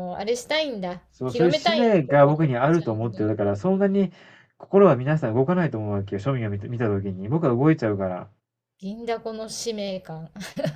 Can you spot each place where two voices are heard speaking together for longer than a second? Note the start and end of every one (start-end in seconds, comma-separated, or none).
1.1-3.2